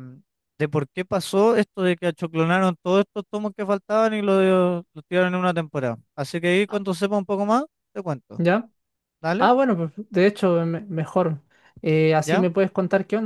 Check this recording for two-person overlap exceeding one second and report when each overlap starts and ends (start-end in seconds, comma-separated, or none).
none